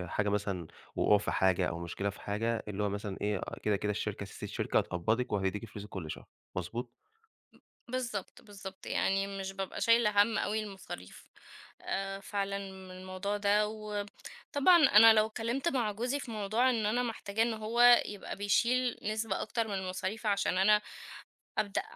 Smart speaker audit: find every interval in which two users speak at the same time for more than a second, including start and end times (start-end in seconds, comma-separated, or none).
none